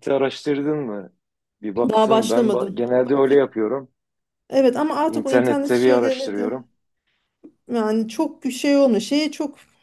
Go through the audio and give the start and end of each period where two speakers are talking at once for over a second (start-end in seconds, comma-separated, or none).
1.9-3.3, 5.1-6.6